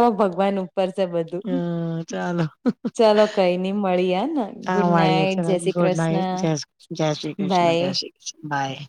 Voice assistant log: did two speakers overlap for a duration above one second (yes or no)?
yes